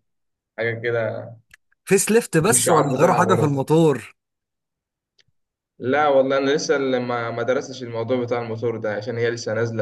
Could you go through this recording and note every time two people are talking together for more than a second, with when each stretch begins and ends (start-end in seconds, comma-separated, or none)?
2.4-3.6